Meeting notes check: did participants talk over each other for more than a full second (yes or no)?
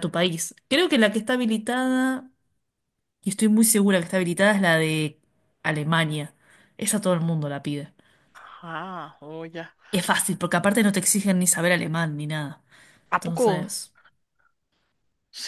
no